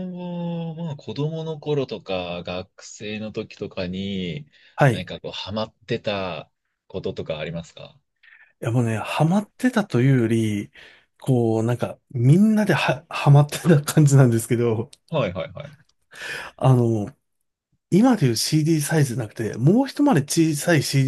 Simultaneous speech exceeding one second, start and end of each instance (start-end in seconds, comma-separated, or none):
none